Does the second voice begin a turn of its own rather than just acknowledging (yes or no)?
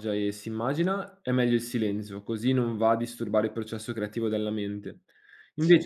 no